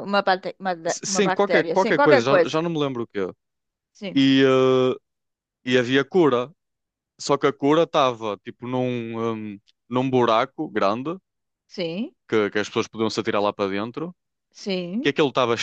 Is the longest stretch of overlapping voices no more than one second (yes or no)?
no